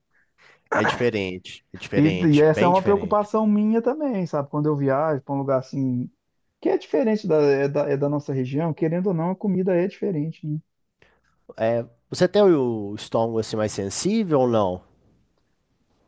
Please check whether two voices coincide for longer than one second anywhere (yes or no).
yes